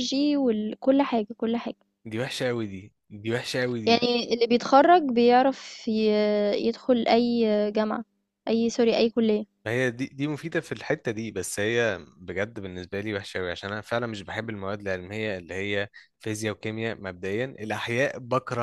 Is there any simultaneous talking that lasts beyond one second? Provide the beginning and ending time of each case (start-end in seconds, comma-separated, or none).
none